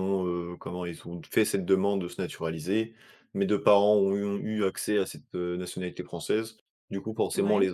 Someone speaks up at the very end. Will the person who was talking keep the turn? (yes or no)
yes